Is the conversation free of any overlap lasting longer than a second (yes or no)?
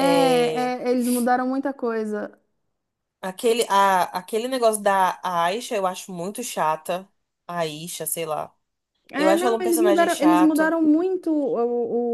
no